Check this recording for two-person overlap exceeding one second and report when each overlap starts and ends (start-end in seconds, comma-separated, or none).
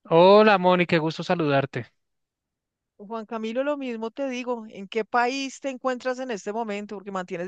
none